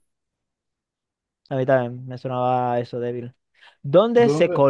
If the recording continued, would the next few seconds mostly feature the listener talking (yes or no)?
no